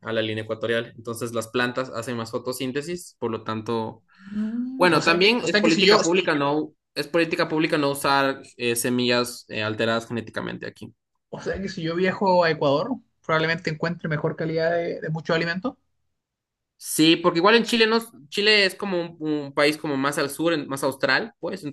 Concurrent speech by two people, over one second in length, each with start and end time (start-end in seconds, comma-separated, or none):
4.8-6.3